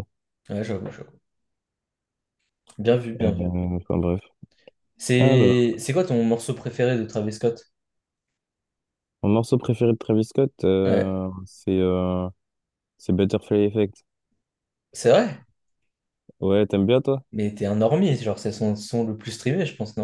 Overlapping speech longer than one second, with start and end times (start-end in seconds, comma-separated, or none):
none